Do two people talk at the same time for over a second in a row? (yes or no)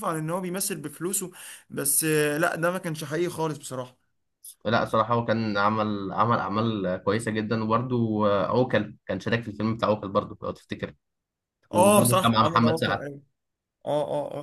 yes